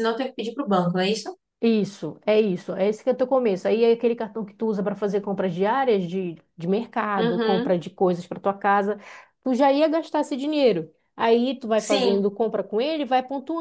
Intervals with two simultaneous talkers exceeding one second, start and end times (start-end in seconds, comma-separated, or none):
none